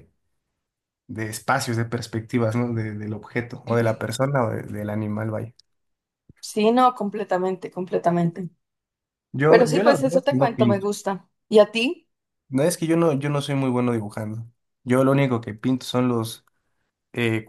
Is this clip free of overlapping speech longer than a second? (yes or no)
no